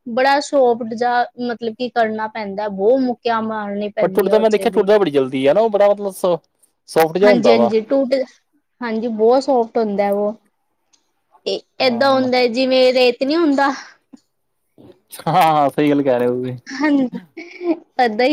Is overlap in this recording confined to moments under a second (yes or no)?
yes